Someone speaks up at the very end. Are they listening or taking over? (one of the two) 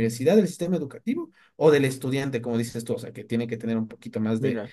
taking over